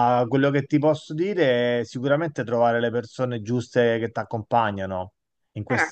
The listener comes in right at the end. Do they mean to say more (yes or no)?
no